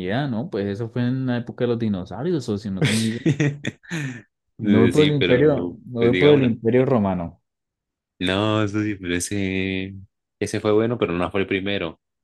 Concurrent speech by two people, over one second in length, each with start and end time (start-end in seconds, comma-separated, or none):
4.9-6.5